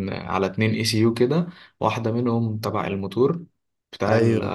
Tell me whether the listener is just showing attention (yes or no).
yes